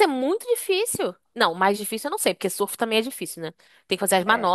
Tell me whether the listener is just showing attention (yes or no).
yes